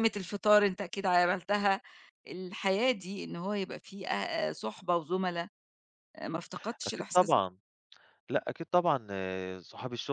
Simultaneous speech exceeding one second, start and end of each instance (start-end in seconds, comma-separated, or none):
none